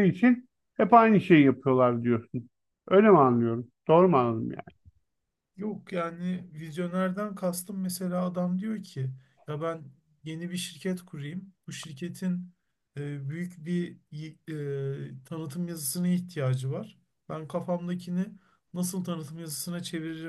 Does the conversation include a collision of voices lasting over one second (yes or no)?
no